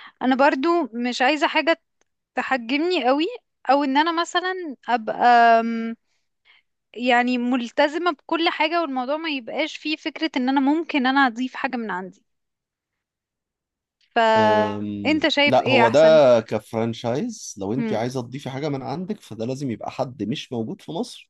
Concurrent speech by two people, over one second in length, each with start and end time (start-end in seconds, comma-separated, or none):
14.4-16.0